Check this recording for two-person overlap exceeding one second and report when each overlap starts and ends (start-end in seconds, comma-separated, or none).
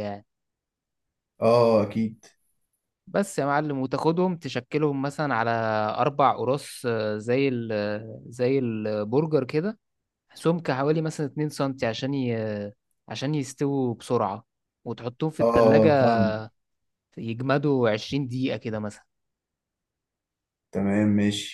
none